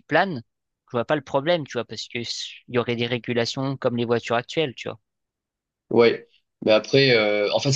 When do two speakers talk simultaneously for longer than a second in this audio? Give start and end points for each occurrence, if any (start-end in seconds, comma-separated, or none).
none